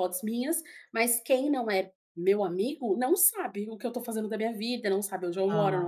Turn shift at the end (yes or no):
no